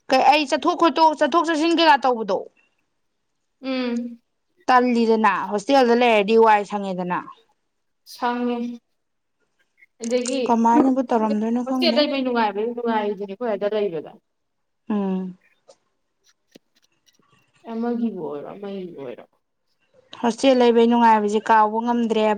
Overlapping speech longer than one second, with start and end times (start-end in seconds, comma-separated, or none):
10.8-12.0